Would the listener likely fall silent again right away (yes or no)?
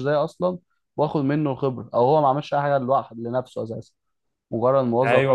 no